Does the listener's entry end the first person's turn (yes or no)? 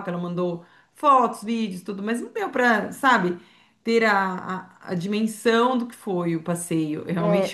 yes